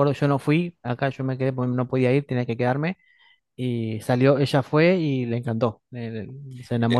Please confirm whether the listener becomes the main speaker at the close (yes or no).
yes